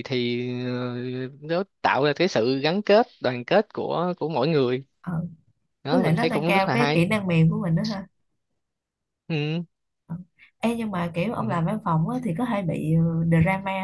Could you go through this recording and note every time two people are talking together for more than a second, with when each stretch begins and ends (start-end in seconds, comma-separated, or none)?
5.9-7.1